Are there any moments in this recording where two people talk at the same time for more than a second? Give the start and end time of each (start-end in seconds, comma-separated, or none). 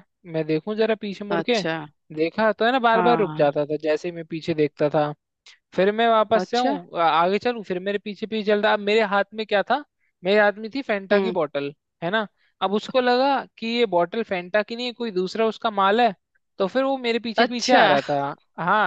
none